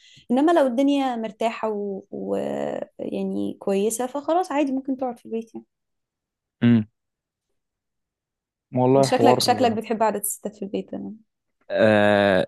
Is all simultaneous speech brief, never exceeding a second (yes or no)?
yes